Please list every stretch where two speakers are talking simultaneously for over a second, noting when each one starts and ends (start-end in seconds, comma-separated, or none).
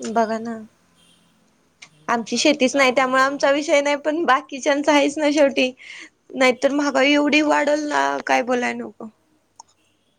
2.1-3.6